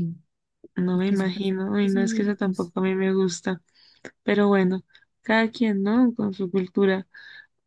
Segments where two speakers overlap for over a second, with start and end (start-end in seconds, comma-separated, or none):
0.9-2.7